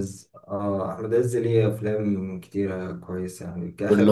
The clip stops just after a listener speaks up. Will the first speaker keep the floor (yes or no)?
yes